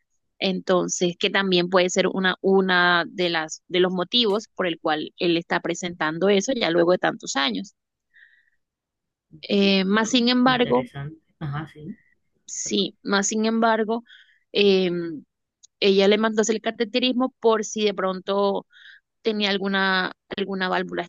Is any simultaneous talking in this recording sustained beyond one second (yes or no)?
yes